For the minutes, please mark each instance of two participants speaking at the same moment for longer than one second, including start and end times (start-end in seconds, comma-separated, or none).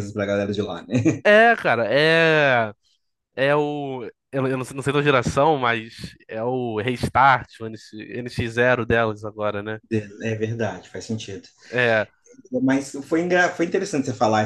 none